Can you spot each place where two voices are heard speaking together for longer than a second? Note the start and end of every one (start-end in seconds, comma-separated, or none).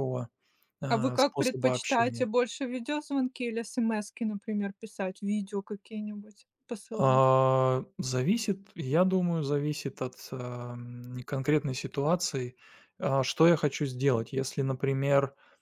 0.8-2.3